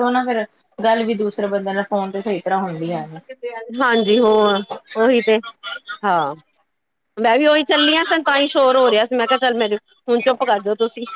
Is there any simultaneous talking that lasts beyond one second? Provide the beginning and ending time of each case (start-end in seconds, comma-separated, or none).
none